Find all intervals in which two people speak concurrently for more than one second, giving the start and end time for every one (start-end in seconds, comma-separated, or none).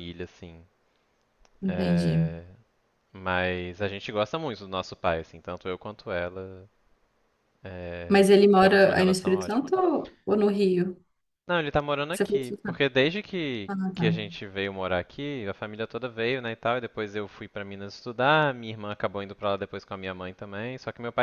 8.1-9.6